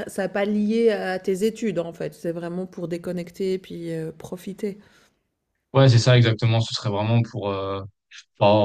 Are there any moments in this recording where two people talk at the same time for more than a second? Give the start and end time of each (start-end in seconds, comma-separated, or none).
none